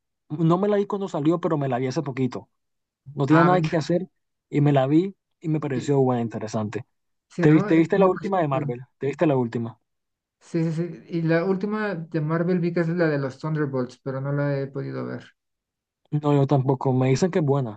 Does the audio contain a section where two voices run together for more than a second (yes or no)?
yes